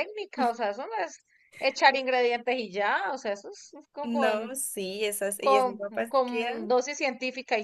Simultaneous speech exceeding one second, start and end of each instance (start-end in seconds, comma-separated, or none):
5.4-6.7